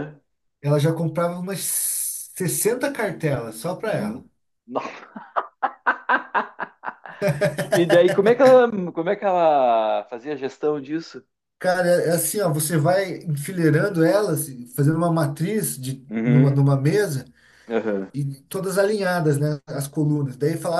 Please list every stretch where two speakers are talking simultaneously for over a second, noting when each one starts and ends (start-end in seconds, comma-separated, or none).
none